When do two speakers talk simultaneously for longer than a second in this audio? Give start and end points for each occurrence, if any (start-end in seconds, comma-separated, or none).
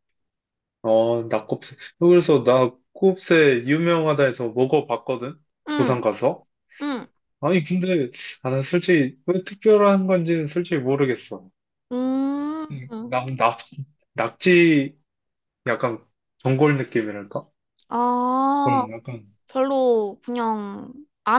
none